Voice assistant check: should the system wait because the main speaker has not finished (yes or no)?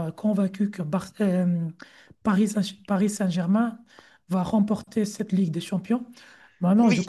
no